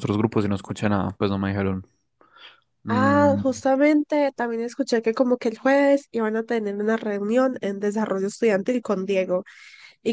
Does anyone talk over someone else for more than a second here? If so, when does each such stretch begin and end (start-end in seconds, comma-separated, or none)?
none